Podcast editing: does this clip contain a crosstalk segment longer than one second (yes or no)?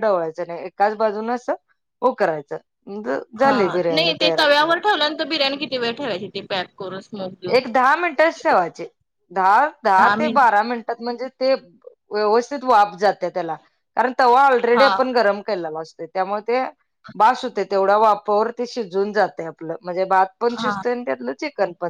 no